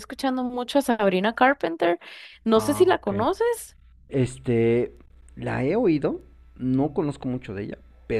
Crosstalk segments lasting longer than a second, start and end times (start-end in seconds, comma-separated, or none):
none